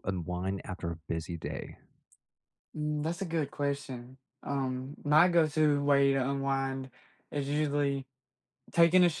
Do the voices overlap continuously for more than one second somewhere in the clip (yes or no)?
no